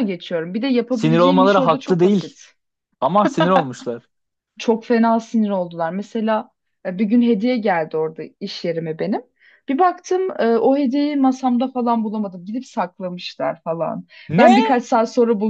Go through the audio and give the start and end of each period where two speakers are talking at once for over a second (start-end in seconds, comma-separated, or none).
0.9-2.4